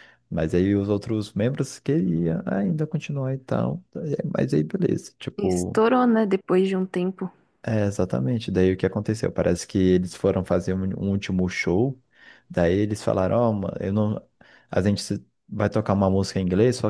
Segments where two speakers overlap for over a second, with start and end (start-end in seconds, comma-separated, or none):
none